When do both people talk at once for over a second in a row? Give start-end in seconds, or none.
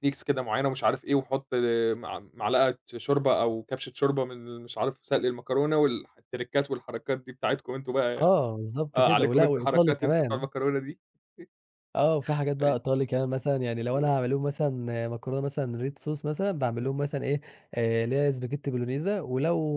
8.9-10.5